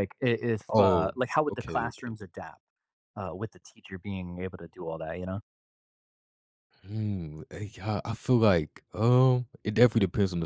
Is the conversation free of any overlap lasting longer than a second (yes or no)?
no